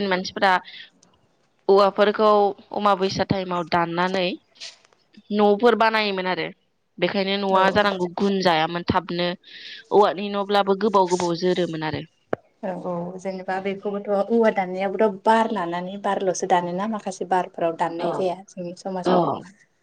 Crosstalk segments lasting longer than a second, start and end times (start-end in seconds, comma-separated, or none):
none